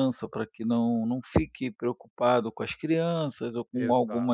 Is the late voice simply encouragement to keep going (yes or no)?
yes